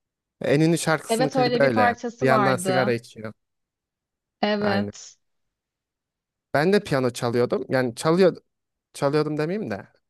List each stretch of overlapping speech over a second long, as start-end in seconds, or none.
1.1-3.0